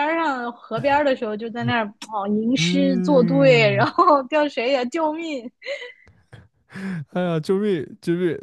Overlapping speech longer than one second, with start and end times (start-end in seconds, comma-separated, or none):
2.5-3.9